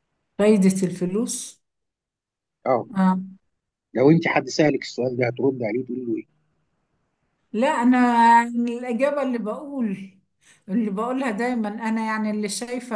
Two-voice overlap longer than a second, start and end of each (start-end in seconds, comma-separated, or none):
none